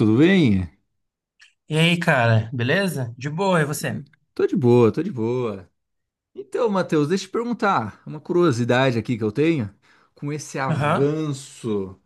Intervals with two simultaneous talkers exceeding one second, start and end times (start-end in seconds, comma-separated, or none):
none